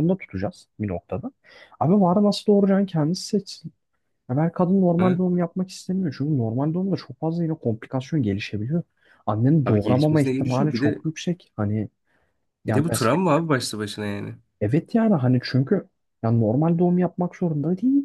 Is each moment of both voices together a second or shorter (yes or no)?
no